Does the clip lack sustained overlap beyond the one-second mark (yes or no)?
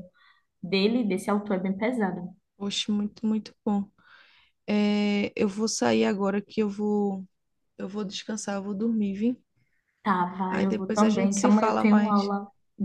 no